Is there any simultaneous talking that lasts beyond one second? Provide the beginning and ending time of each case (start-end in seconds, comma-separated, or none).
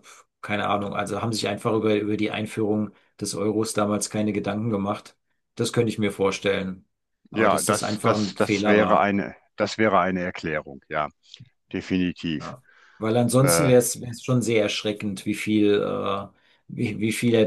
7.4-9.1